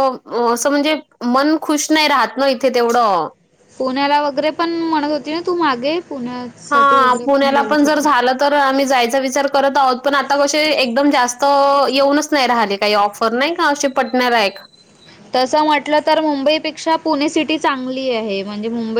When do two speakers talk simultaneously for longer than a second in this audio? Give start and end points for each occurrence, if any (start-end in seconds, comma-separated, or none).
6.7-8.1